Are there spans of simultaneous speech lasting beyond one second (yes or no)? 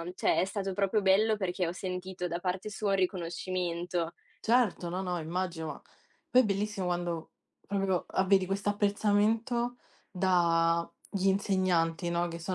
no